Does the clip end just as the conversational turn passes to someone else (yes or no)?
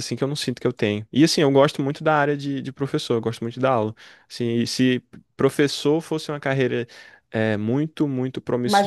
no